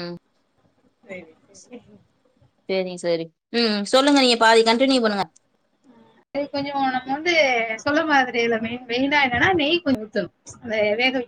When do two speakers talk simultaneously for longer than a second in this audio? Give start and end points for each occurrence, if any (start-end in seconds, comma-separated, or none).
none